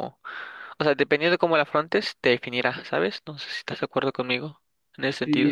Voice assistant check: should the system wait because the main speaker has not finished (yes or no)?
no